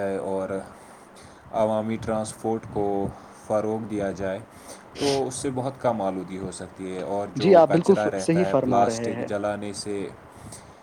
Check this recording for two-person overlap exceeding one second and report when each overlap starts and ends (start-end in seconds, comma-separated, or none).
7.4-9.3